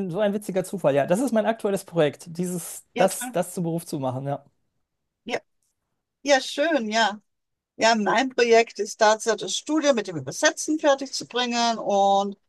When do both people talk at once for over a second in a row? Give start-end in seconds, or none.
none